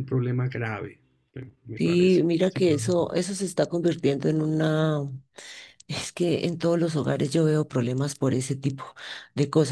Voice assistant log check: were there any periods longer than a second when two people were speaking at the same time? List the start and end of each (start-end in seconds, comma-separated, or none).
1.8-3.1